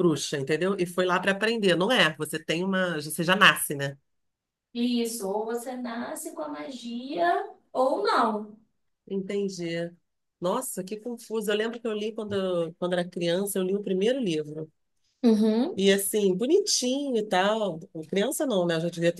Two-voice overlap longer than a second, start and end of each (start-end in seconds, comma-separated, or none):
none